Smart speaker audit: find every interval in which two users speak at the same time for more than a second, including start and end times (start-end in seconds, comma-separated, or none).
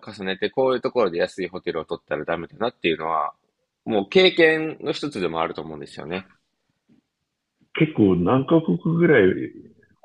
none